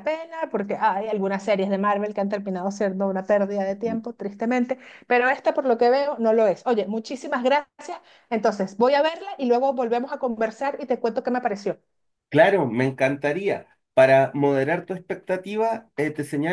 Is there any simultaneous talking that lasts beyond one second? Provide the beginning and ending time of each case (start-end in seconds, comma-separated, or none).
none